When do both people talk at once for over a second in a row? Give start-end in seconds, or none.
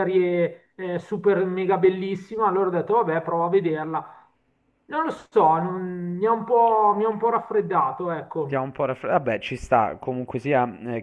none